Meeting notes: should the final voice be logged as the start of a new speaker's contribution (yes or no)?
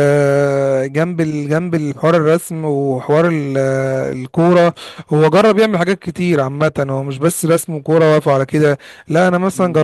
no